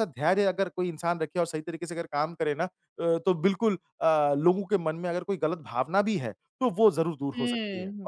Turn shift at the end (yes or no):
yes